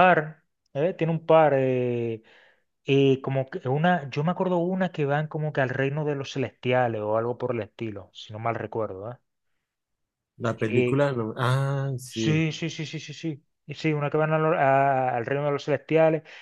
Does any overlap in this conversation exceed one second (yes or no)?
no